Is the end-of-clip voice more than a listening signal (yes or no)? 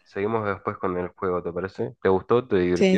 yes